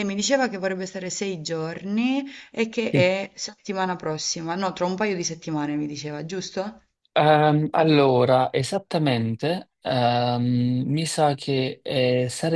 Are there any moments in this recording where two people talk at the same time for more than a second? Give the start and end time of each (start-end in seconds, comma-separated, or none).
none